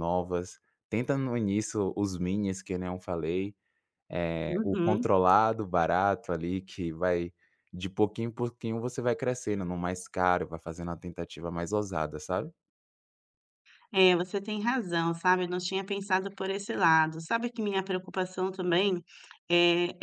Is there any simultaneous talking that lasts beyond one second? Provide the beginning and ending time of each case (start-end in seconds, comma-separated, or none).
none